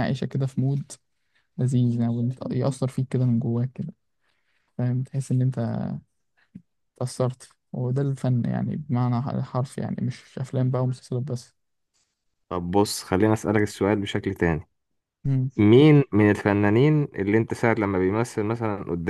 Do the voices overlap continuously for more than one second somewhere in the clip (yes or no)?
no